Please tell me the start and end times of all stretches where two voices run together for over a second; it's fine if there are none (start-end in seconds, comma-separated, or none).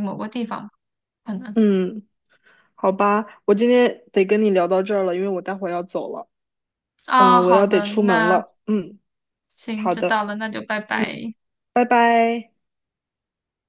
7.2-8.4